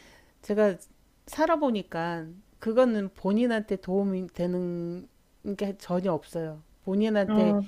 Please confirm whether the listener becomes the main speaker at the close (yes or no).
no